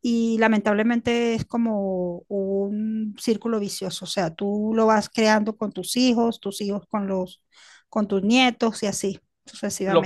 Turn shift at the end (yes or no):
yes